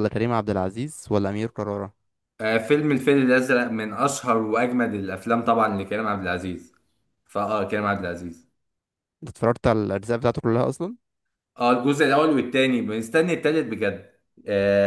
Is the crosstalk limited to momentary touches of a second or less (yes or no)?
yes